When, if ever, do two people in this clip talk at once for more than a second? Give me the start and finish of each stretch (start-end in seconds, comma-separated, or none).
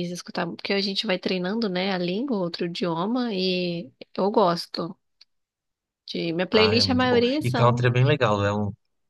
6.5-7.9